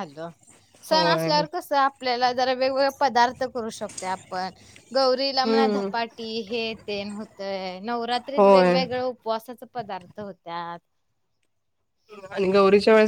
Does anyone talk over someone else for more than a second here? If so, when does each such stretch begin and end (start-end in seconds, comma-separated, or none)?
none